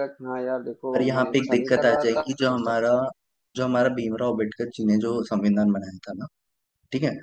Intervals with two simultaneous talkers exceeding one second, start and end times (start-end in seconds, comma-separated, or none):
0.9-2.9